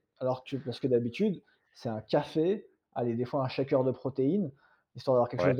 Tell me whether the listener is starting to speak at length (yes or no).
no